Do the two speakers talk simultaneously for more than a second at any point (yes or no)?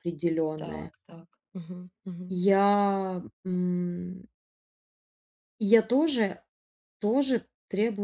no